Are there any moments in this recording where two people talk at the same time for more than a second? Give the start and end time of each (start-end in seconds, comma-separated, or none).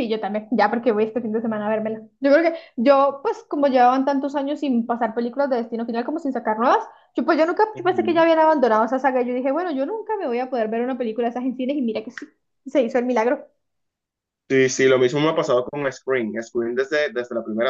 none